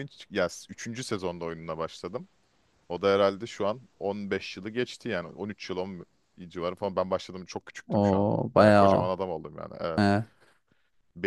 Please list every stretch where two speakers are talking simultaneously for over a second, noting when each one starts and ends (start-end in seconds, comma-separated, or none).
7.9-9.1